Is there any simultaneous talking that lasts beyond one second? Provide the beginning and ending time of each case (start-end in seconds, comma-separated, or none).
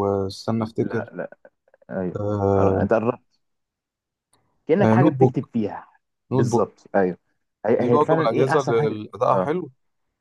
7.8-9.5